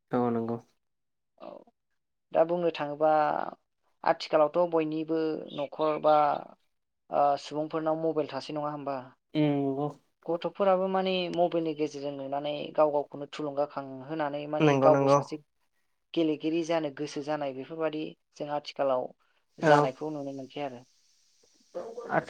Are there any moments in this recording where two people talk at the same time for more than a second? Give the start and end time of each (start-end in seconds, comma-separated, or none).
none